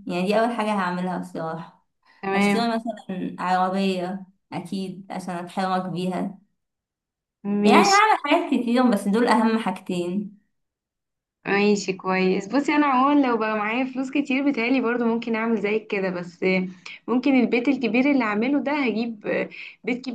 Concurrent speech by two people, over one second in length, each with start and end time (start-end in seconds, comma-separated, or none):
none